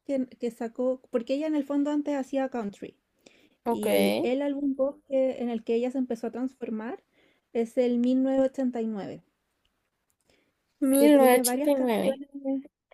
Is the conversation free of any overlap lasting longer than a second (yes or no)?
no